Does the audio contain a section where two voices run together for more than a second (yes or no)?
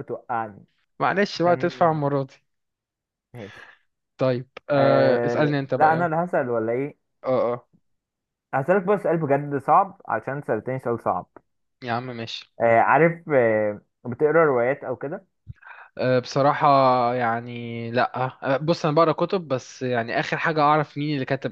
yes